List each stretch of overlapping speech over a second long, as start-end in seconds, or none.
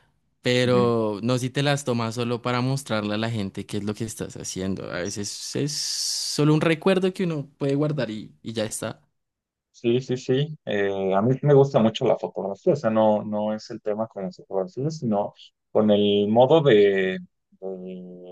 none